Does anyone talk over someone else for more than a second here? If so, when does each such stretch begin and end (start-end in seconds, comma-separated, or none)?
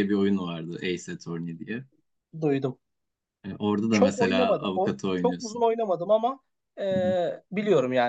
3.9-5.7